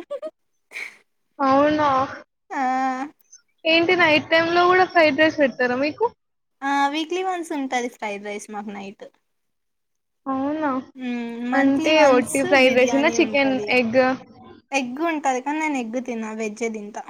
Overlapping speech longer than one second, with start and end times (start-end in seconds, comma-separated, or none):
11.6-13.7